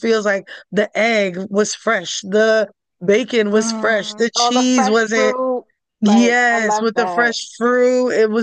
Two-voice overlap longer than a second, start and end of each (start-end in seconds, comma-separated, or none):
3.5-5.3, 6.0-7.4